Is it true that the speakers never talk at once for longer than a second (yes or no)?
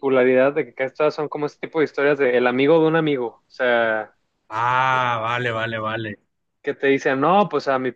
yes